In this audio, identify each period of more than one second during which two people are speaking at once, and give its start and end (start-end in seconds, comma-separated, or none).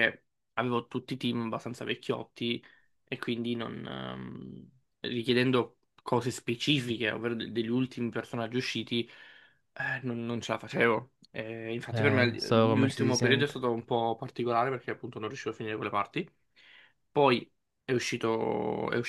11.9-13.5